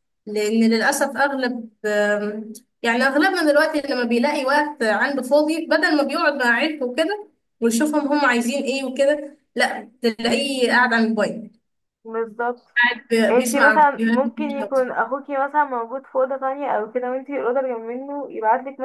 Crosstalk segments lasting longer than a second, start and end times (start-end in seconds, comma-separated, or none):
13.3-14.8